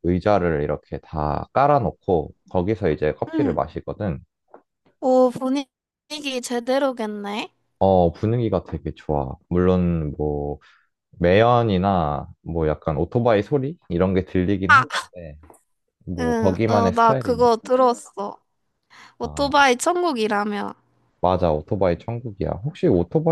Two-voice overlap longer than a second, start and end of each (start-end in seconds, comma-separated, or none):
16.2-17.5